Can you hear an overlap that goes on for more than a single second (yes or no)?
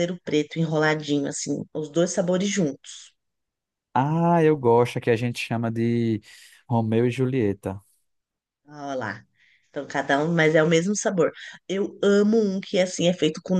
no